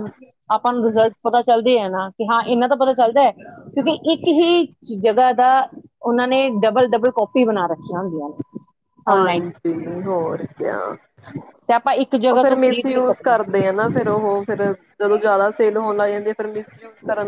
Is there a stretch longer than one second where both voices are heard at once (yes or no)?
yes